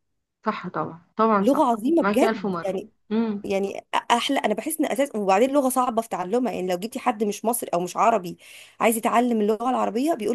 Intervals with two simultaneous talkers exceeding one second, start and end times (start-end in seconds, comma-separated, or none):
1.4-2.7